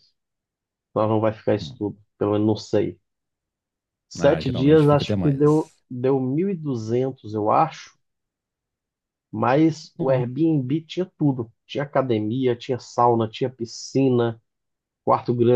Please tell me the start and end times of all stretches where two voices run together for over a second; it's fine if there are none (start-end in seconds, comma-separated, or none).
4.2-5.7